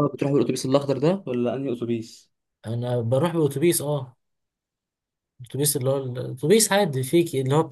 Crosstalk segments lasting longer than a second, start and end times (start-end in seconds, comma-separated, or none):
none